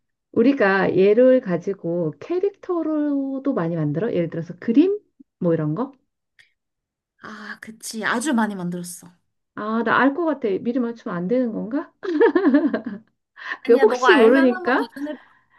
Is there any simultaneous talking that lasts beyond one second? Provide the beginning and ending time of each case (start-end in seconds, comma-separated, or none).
13.7-14.9